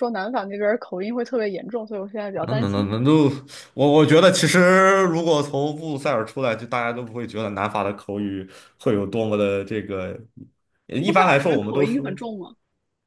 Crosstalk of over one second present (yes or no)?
yes